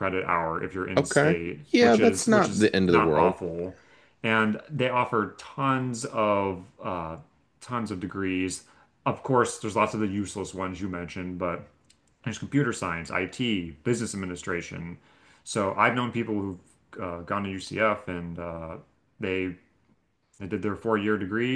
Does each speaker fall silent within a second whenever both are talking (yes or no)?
no